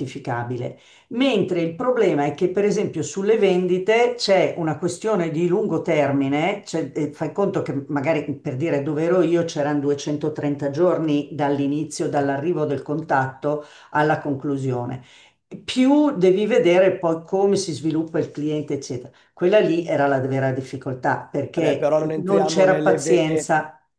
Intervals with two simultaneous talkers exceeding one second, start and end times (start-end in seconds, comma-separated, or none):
21.5-23.5